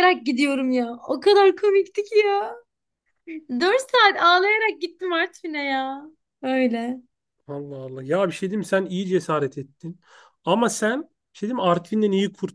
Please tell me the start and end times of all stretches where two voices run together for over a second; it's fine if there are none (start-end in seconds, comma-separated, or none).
none